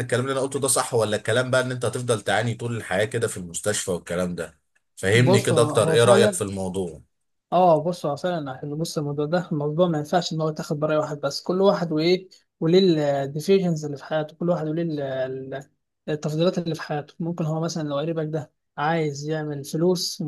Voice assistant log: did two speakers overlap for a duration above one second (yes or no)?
yes